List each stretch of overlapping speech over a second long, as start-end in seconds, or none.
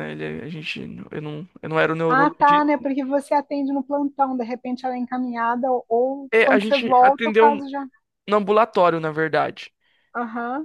6.3-7.7